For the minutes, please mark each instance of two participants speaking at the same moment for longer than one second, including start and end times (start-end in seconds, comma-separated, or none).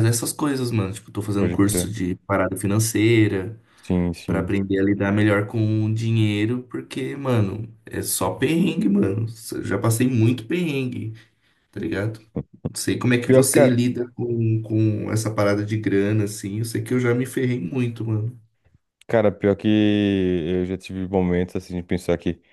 none